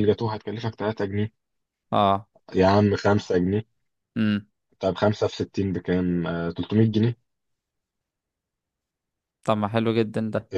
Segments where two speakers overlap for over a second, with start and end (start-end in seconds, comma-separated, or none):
none